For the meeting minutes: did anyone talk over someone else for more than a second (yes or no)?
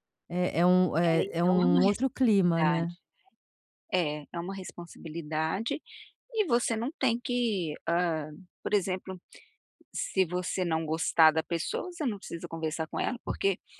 yes